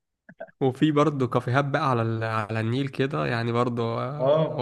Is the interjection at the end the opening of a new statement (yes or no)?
no